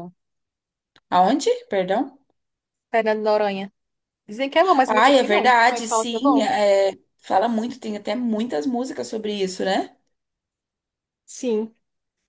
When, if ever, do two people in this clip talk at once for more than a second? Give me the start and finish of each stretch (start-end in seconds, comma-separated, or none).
4.8-6.4